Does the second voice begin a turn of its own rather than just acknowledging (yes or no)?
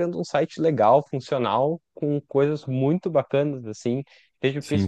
no